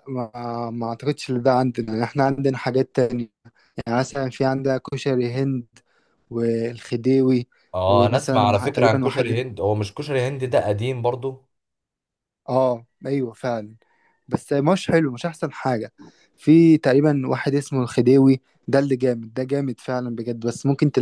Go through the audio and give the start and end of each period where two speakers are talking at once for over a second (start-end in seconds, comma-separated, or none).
7.9-9.4